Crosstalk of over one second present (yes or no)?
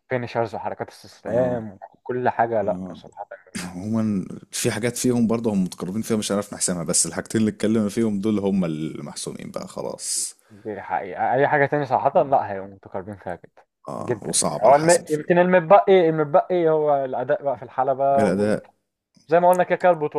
yes